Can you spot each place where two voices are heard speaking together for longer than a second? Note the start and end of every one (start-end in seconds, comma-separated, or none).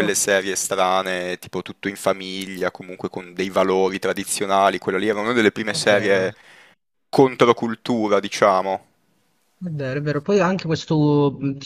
none